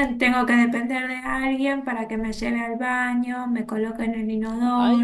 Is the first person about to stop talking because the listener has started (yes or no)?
yes